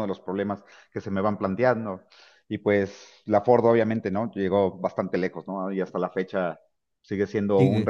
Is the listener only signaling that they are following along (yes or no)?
yes